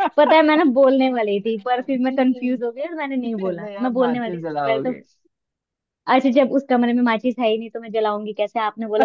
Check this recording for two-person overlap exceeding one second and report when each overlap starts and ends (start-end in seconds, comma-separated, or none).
3.4-4.9